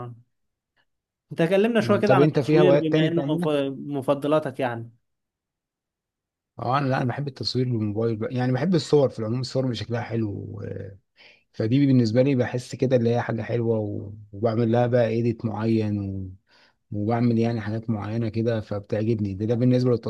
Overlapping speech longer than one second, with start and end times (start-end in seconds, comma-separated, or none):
1.8-3.5